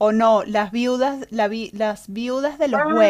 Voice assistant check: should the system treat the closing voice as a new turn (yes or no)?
yes